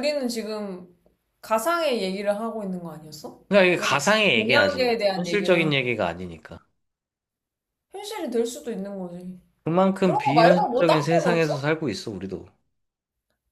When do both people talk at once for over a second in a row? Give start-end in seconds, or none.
3.5-6.0, 10.0-11.7